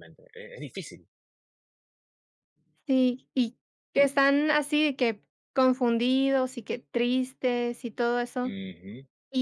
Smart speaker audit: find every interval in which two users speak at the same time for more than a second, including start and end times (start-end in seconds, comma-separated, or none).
none